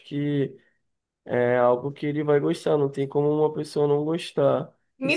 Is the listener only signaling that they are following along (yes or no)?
no